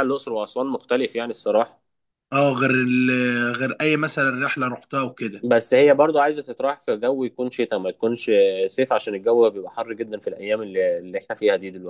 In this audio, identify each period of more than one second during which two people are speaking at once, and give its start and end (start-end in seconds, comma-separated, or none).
none